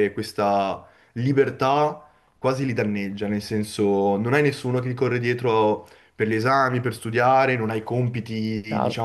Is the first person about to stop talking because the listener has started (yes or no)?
no